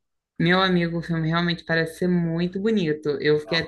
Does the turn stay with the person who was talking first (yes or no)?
yes